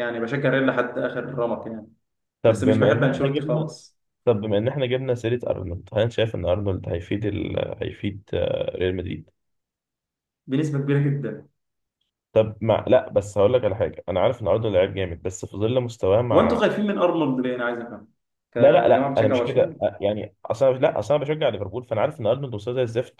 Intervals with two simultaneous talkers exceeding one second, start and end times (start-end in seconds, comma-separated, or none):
2.4-3.7, 18.6-19.8